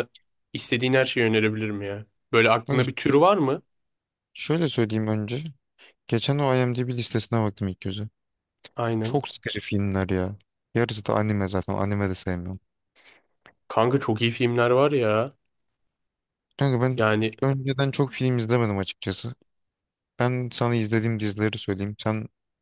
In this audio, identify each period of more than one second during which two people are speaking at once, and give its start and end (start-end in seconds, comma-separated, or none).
none